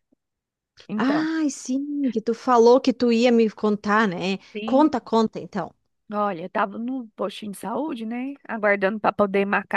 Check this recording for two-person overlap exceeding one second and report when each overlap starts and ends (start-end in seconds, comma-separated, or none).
none